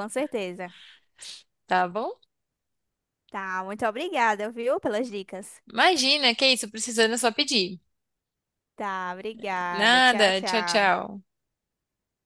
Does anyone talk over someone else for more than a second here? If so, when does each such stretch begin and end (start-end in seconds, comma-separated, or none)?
9.7-10.9